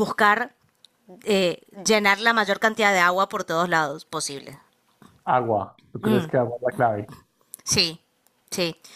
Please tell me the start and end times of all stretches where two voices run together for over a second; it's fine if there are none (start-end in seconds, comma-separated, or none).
none